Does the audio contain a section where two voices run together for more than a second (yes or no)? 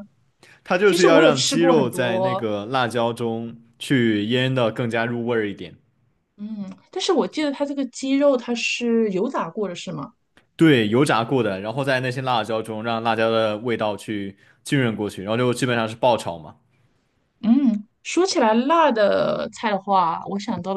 yes